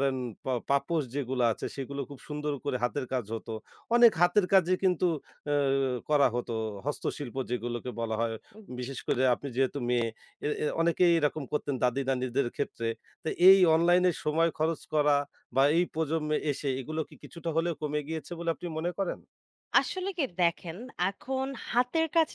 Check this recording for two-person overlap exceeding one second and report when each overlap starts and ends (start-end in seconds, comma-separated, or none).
none